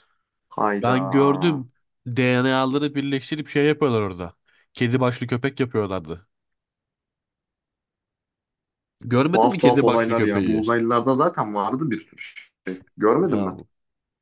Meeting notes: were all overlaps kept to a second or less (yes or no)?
no